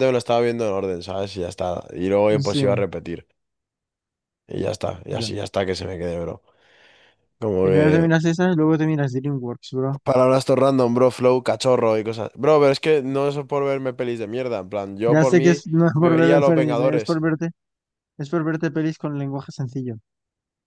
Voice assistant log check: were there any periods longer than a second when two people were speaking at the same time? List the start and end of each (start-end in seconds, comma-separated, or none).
15.1-17.2